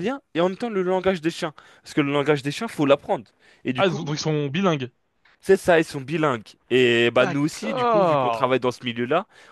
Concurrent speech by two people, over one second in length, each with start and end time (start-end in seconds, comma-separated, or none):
7.2-8.6